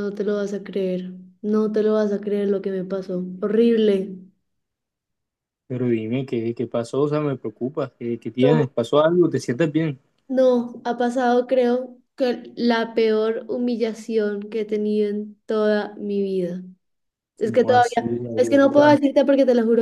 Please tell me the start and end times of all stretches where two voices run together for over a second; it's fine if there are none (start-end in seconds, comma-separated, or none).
17.4-19.0